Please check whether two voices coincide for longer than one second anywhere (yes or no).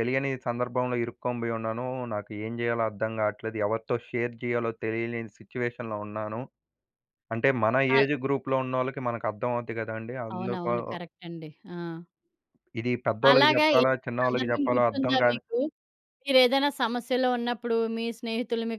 yes